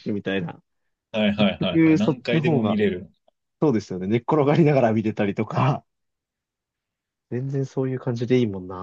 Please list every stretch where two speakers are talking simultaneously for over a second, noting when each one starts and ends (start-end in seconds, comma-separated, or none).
1.4-2.8